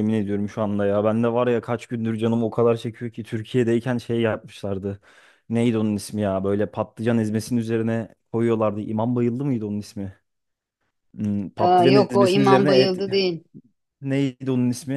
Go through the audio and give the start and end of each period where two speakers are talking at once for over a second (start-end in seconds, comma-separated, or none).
11.6-12.9